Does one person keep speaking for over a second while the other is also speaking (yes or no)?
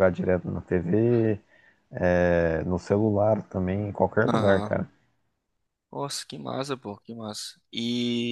no